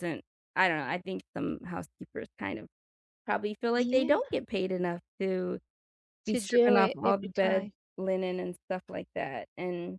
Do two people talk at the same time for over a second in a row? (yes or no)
yes